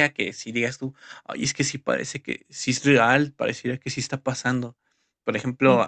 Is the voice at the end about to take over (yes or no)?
no